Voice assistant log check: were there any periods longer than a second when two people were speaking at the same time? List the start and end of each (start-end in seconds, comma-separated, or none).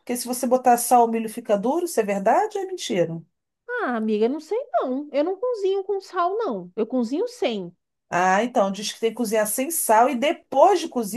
none